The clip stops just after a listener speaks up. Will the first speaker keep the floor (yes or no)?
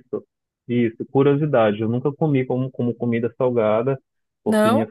yes